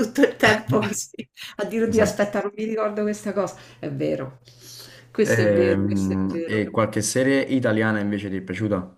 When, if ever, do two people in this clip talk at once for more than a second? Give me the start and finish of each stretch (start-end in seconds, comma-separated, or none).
5.2-6.6